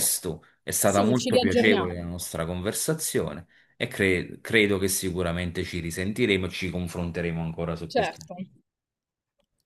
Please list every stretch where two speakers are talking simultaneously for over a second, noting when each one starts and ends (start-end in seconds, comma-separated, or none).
0.8-2.0